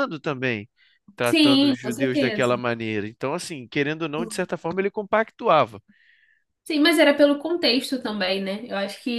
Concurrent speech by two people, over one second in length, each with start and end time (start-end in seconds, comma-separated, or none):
1.2-2.5